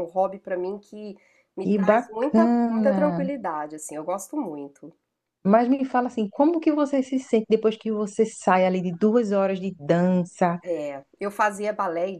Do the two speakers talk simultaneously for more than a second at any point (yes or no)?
yes